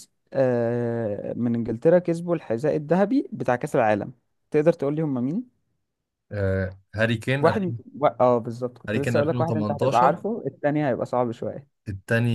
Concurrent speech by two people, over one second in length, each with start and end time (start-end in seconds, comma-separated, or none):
8.9-10.2